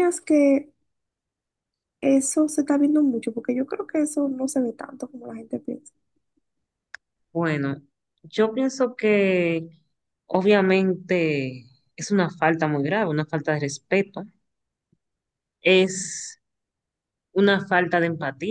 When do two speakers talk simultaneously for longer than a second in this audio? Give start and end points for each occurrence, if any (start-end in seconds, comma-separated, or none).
none